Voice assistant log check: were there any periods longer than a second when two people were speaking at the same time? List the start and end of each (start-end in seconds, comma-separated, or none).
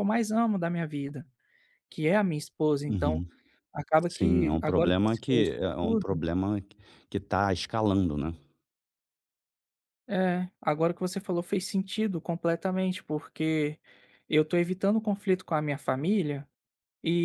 4.1-6.2